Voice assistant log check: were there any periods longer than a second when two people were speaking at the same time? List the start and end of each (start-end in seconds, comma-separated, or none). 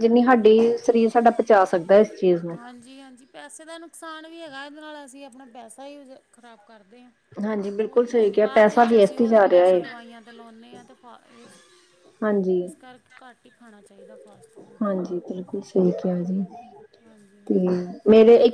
7.8-9.8